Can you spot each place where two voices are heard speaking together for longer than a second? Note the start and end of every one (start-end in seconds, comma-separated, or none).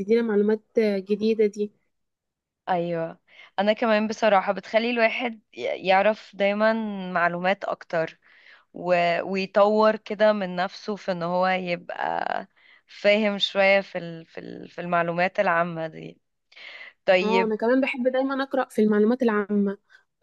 none